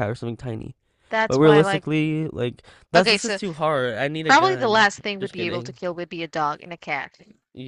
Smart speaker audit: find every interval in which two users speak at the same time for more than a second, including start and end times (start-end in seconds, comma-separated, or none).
4.2-5.8